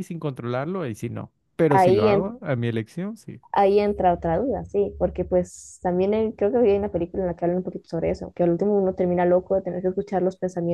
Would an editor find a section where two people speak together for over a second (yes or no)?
no